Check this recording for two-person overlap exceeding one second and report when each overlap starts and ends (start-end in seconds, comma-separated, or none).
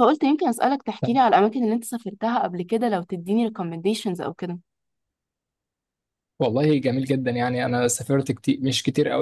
none